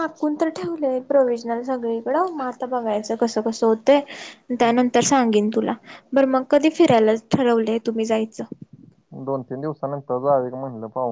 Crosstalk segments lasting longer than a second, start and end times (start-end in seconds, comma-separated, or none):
none